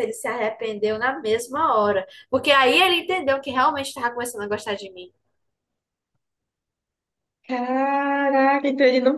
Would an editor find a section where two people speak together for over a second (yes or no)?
no